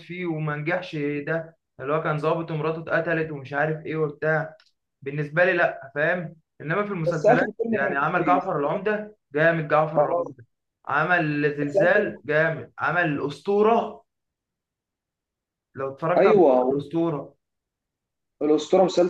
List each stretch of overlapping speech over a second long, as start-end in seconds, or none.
7.1-8.5